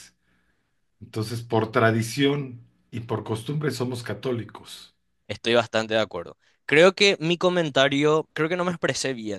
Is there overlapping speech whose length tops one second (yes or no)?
no